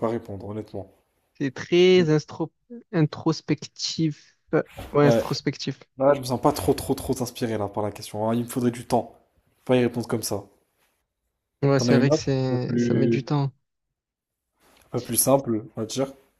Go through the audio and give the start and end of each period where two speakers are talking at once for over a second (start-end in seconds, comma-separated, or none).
11.8-13.2